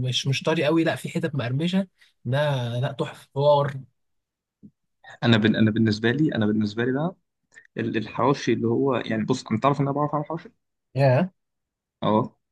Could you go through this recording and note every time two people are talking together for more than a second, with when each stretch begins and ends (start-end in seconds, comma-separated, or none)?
none